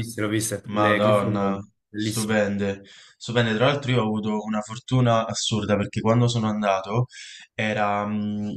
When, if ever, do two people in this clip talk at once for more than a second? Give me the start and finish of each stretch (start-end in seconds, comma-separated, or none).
0.7-2.4